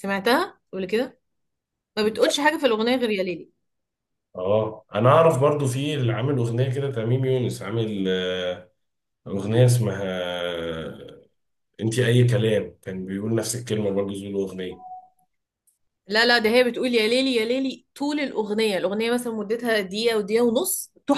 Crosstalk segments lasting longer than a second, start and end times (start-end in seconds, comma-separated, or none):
none